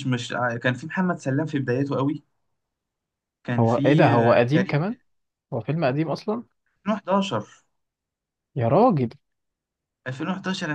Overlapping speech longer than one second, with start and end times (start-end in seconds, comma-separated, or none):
3.6-4.8